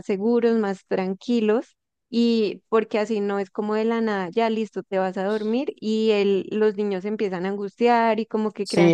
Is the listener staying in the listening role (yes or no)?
no